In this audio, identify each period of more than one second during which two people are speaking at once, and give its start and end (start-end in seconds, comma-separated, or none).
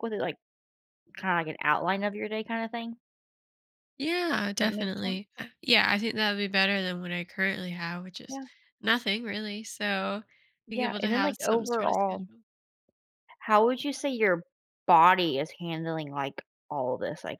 10.7-12.3